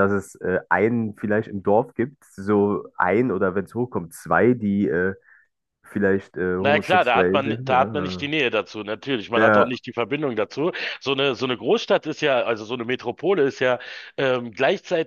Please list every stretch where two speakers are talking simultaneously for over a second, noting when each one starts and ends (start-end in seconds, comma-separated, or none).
6.6-8.3